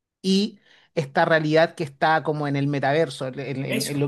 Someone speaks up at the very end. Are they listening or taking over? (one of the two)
listening